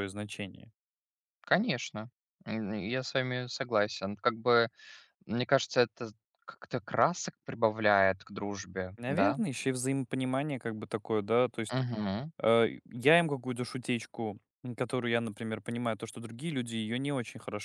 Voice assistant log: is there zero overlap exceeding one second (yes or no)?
yes